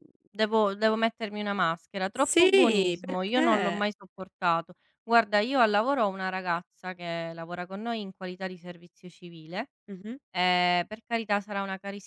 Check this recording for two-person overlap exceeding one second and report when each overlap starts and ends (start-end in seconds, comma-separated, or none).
2.1-3.9